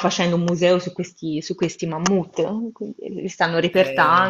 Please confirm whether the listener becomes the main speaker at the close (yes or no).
no